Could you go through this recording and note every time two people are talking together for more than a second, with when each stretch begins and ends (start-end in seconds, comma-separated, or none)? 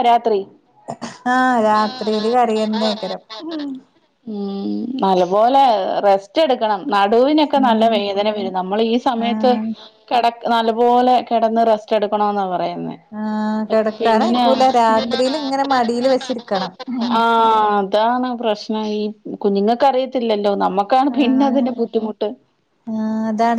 none